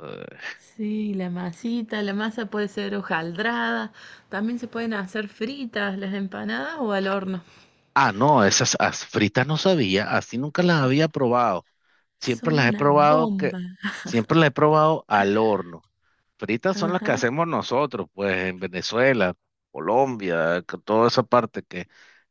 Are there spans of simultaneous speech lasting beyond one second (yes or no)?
yes